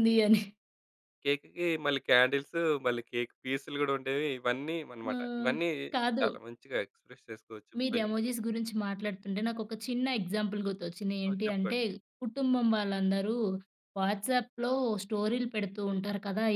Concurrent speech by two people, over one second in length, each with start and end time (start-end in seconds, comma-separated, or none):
none